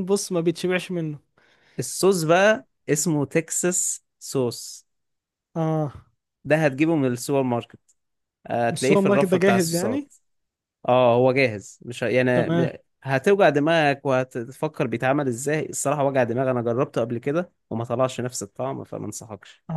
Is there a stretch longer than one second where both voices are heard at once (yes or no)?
yes